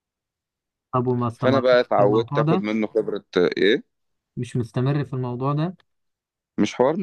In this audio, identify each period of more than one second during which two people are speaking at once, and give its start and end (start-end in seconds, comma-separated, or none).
1.4-2.6